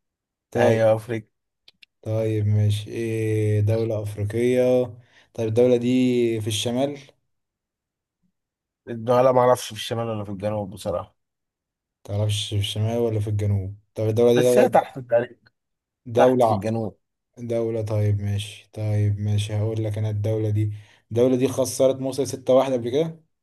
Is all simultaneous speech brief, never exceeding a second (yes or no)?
yes